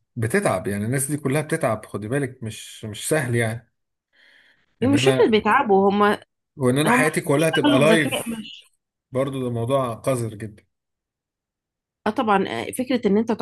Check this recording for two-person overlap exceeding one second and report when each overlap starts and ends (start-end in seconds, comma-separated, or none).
6.9-8.5